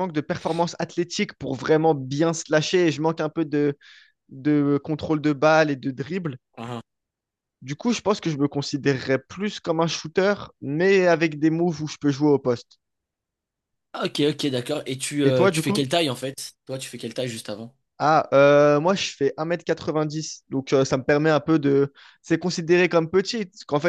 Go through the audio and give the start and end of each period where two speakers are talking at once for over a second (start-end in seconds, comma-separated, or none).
none